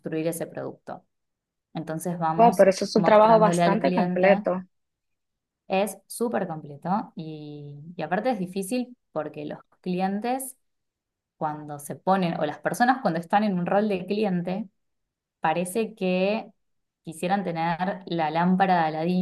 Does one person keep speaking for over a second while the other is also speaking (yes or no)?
yes